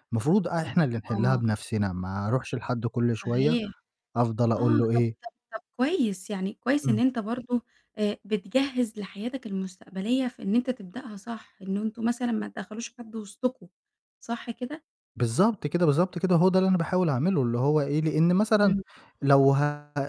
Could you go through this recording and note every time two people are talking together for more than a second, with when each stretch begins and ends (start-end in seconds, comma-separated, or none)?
none